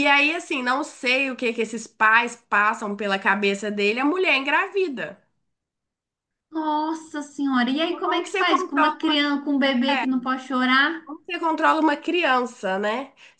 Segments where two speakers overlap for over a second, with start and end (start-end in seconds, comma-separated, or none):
7.9-9.2